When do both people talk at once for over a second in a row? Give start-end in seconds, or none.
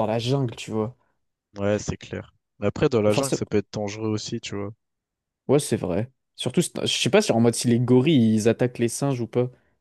none